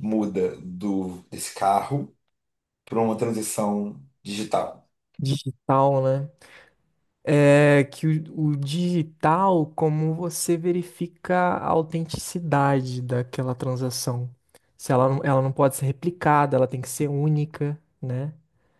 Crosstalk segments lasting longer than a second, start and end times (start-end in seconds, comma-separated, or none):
none